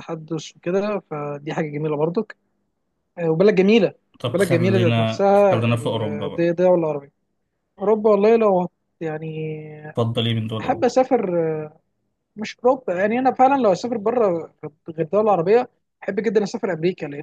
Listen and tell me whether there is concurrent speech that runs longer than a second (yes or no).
yes